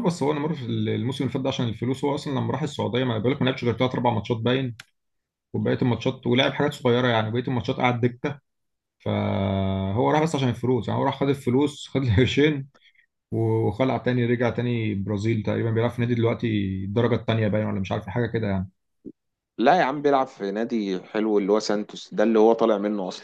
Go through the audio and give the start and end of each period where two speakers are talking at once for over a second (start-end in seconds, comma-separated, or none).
none